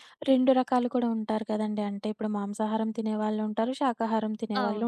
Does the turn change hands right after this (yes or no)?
no